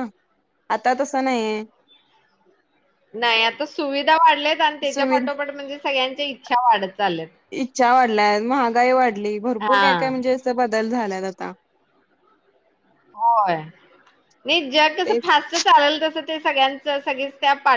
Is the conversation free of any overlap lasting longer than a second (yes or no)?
yes